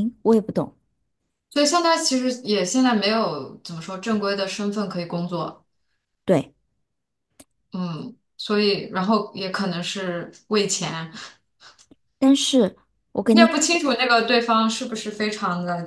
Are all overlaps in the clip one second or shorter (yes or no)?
yes